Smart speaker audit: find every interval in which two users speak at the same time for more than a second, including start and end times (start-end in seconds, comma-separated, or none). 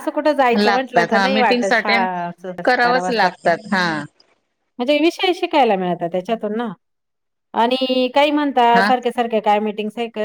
0.6-2.1